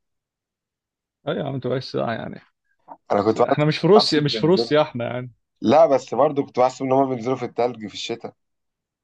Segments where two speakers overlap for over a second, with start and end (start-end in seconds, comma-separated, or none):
3.2-4.7